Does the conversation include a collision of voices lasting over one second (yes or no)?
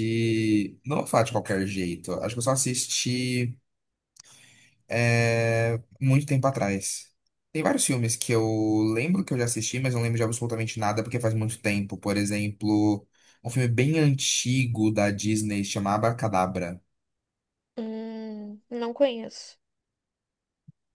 no